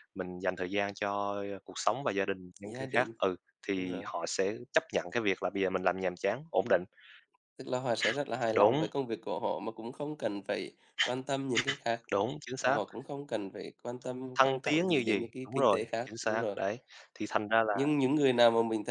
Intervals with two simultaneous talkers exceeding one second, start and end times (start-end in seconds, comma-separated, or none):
14.4-16.6